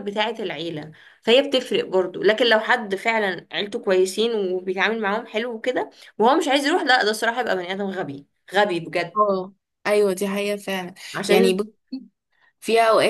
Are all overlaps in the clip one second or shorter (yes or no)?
yes